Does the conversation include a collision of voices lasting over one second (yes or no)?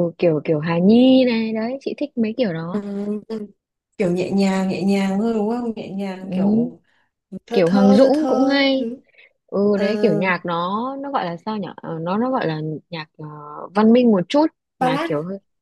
yes